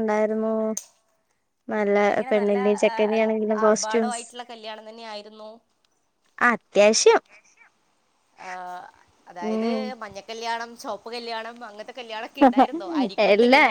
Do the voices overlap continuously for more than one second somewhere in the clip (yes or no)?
no